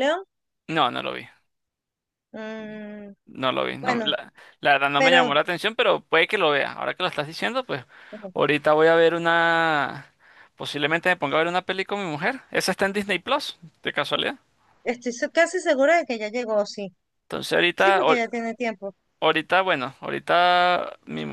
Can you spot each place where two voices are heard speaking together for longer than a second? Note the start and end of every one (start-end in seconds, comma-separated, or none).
none